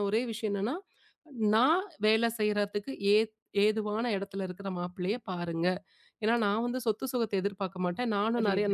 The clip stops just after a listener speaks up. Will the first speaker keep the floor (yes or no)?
yes